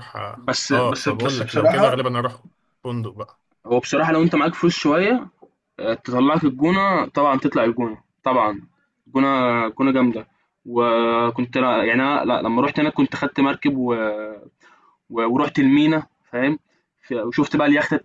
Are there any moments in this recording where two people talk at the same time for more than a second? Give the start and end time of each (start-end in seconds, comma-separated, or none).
0.7-2.0